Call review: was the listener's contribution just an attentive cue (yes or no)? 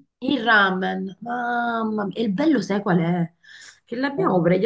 yes